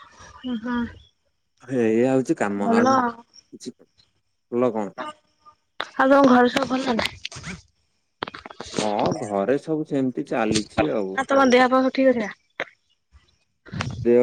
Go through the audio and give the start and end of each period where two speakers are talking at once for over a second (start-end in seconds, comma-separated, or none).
none